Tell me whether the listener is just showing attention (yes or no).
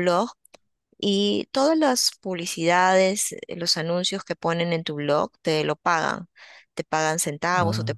yes